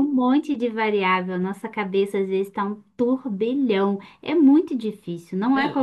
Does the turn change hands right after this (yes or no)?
yes